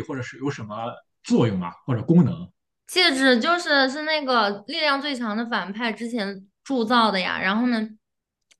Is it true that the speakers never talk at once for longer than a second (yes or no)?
yes